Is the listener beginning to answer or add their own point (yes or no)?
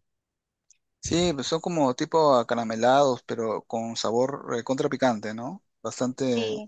no